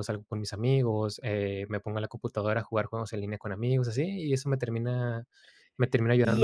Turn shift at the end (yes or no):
yes